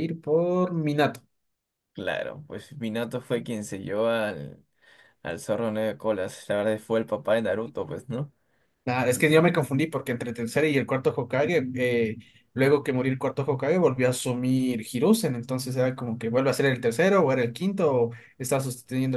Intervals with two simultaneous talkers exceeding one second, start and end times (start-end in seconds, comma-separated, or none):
none